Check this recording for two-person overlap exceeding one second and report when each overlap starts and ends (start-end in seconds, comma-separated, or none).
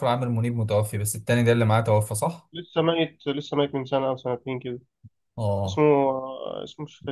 none